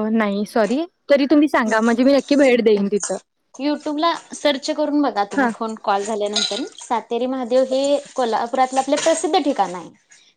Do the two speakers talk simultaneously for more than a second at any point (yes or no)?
no